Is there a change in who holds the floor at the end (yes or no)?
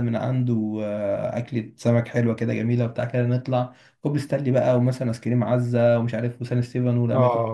yes